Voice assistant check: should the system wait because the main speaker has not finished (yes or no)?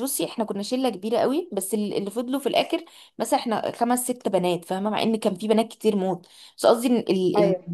yes